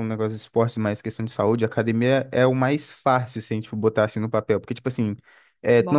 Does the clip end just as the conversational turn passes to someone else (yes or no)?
no